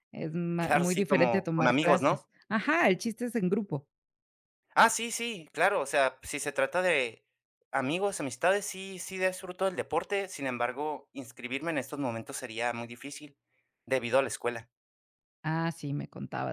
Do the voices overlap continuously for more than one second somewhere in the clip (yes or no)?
yes